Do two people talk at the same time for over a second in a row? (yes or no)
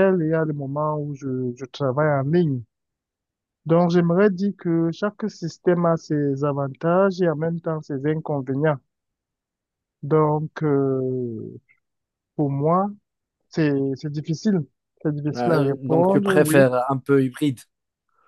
yes